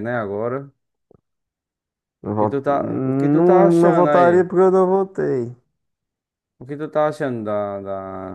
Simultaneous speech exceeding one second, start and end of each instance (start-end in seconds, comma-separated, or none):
2.2-4.5